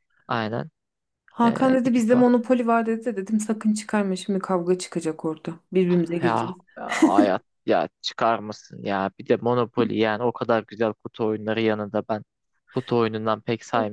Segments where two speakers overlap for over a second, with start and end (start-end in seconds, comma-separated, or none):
none